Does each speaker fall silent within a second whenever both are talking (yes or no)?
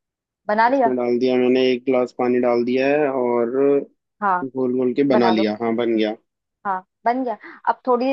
yes